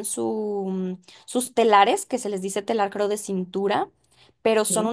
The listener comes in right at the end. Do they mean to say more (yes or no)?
no